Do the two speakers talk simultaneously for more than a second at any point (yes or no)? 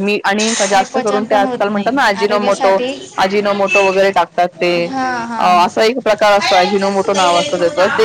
yes